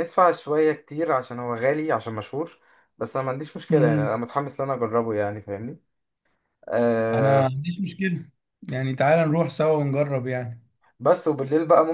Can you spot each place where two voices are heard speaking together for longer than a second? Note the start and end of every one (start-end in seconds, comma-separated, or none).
none